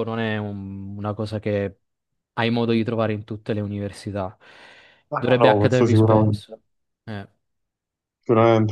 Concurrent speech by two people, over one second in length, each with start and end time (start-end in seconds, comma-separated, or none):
5.2-6.4